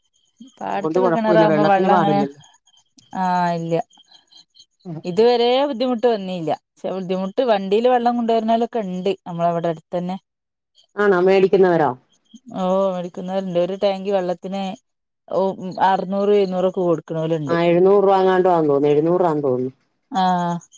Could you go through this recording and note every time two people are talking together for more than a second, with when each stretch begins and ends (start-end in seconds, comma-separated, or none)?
0.7-2.2